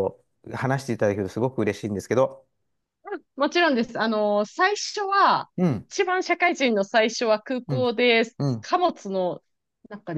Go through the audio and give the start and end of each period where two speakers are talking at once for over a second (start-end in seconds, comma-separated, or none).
none